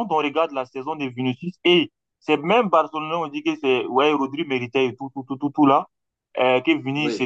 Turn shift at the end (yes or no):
no